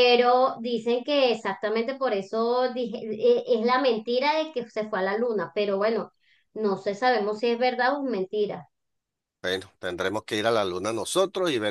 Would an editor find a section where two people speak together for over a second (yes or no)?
no